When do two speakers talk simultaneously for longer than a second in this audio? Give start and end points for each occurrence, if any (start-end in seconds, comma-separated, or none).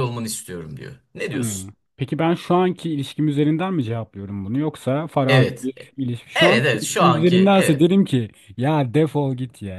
6.3-7.9